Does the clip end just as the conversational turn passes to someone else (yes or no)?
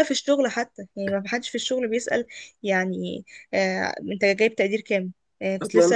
no